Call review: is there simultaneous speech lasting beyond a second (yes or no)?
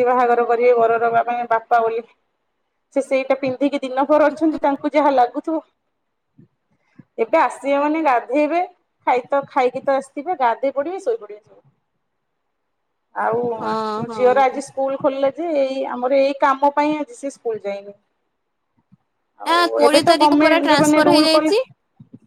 yes